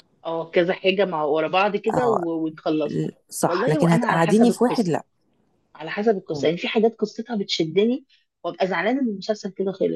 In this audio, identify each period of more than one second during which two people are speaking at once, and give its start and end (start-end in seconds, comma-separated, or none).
2.9-5.0